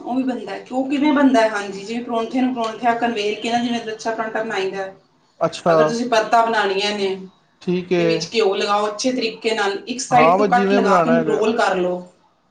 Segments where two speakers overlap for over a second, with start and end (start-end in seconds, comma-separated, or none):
10.1-11.4